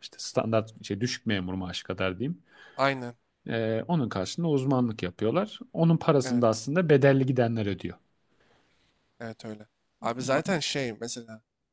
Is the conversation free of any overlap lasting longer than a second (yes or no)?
yes